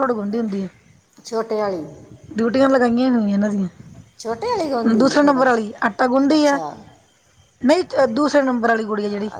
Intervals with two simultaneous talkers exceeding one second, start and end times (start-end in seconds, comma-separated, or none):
4.2-5.4